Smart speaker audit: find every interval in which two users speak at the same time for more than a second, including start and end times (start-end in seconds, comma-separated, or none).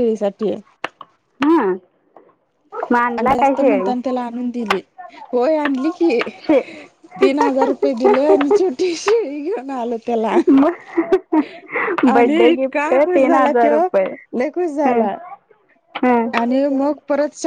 12.1-13.8